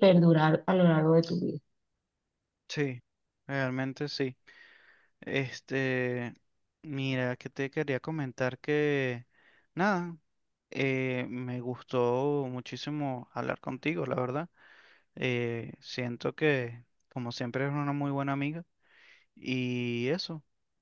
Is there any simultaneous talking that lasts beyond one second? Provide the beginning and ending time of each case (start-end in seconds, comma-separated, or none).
none